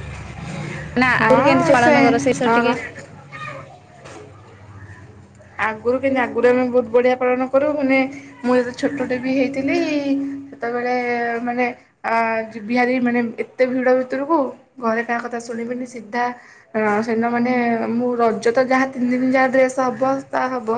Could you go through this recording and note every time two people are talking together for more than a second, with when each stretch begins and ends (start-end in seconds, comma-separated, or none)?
1.2-2.8